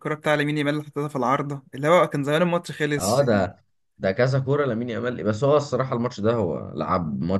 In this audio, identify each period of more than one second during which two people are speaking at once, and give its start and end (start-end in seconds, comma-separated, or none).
none